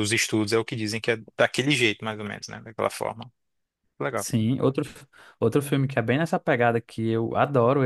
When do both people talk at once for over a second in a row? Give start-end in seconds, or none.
none